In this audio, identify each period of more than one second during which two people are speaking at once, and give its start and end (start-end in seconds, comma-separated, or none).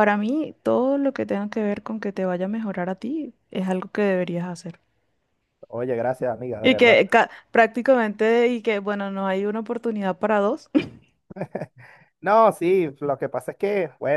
none